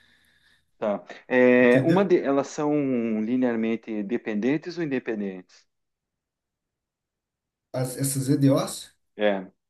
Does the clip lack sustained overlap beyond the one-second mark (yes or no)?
yes